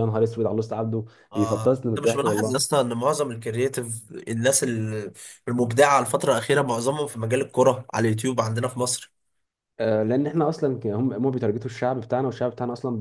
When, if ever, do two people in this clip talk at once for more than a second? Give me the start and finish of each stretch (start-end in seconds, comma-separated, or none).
1.3-2.8